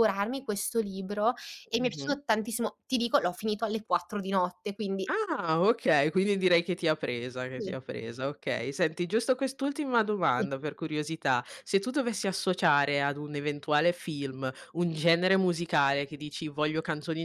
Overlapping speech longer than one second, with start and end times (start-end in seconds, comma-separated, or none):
none